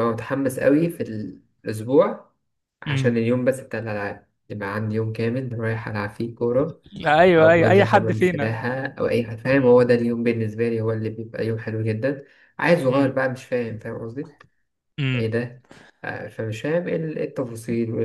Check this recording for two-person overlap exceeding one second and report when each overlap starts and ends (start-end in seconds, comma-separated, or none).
7.4-8.7